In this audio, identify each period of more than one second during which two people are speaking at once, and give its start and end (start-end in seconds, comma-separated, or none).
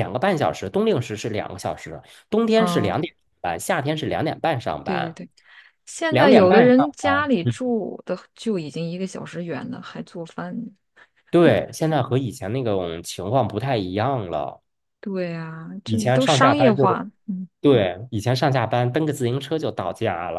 6.1-7.5, 15.8-17.1